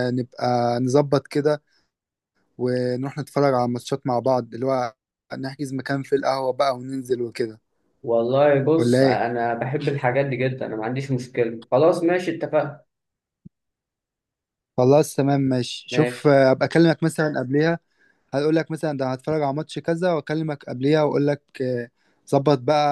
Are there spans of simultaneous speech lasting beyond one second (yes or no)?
no